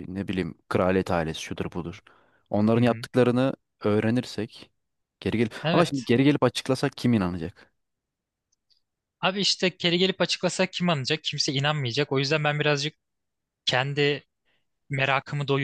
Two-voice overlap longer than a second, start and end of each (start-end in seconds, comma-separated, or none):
none